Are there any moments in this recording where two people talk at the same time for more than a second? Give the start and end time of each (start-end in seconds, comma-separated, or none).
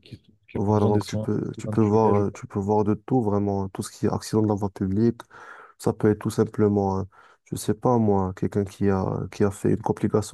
0.5-2.4